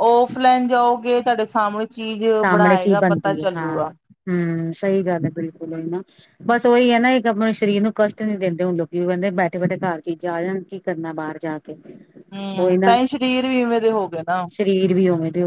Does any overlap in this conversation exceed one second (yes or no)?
yes